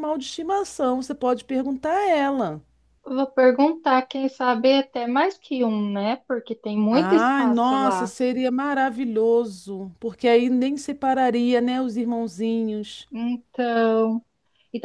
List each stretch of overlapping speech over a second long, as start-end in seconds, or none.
6.9-8.1